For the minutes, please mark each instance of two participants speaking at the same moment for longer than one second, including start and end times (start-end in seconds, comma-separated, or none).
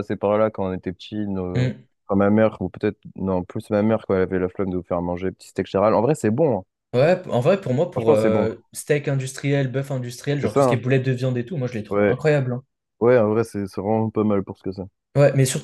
none